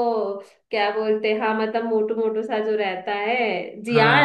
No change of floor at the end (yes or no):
no